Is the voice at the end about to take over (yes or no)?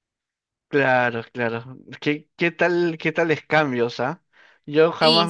no